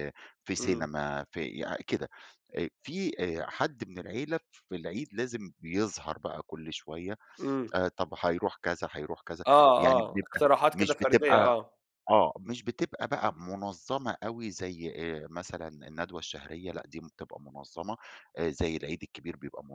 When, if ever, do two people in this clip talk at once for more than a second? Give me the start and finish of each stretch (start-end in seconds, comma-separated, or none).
9.5-11.6